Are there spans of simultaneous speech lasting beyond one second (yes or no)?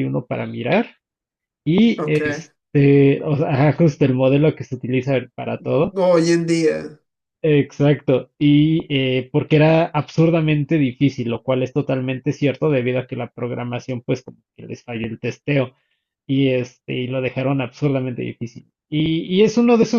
no